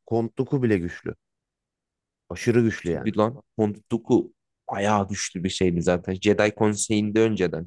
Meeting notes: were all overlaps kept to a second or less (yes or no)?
yes